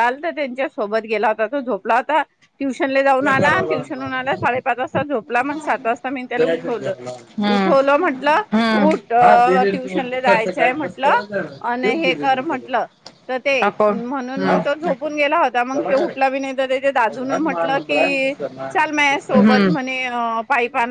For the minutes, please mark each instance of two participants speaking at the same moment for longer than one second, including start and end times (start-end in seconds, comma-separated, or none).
13.7-15.3